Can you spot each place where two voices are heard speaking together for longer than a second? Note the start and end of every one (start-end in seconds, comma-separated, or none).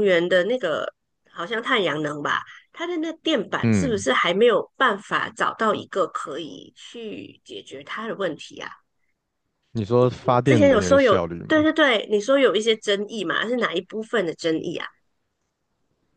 10.0-11.7